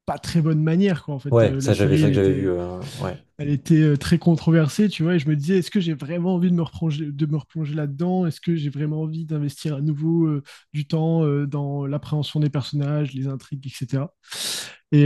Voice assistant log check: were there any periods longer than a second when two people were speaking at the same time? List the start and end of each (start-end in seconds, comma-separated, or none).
1.3-2.5